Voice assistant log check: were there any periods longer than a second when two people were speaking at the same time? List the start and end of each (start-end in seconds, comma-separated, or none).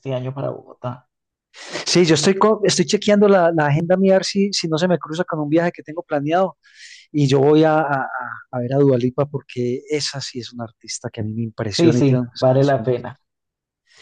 11.8-13.0